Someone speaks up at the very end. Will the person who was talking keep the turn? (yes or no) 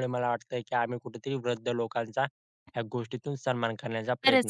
no